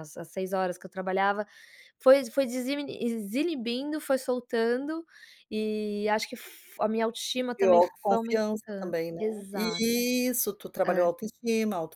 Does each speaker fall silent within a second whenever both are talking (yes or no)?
no